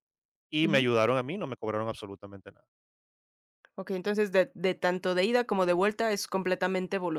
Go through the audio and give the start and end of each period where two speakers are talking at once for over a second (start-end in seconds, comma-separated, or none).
none